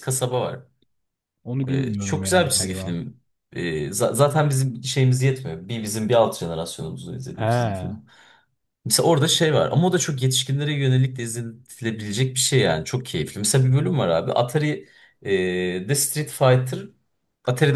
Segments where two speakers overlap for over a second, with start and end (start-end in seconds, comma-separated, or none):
1.7-3.0